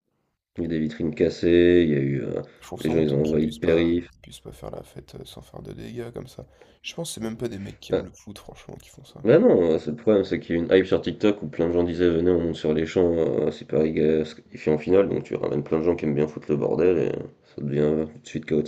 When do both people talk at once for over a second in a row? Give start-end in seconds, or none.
2.8-4.1